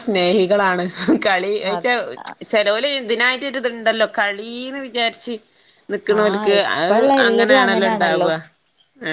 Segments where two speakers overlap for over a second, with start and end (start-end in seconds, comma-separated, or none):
6.2-8.3